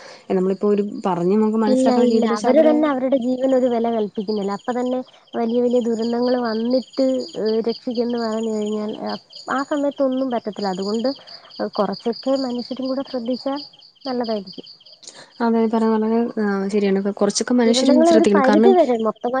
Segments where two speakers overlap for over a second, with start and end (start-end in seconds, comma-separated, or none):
none